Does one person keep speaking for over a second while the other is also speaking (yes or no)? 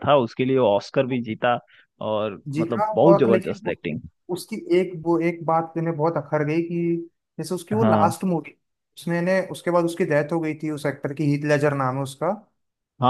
yes